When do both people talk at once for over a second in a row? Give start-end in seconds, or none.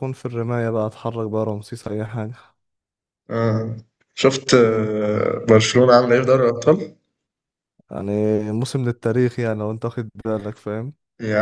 none